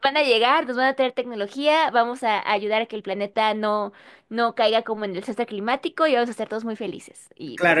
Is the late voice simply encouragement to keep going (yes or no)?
no